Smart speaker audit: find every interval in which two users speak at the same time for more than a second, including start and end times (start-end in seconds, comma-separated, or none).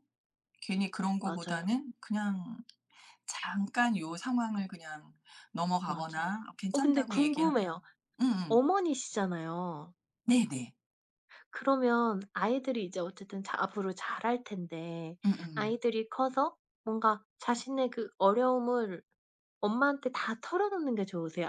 5.8-7.8